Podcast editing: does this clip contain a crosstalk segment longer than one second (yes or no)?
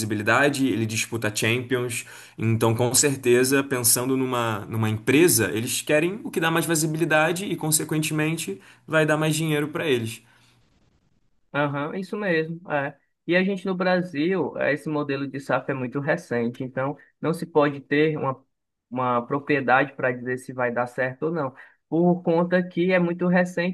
no